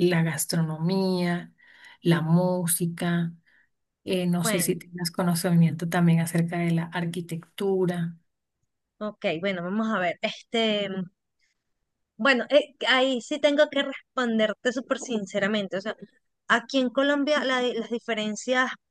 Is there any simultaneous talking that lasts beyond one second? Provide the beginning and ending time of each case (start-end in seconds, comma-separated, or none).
none